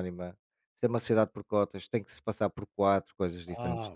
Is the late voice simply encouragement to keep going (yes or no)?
yes